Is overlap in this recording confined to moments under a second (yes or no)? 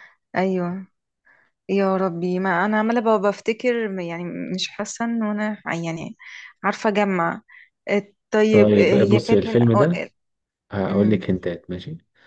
no